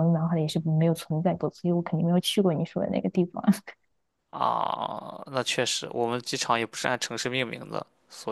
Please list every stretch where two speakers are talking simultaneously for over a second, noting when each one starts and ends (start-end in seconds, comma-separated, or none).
none